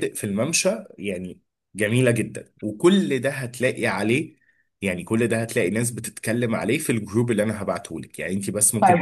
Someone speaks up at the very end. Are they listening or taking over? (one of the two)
taking over